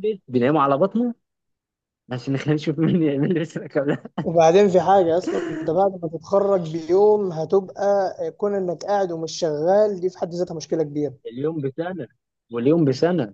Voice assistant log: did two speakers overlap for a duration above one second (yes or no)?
no